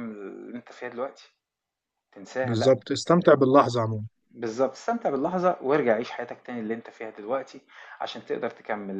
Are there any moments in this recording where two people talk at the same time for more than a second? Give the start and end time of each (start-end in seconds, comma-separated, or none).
none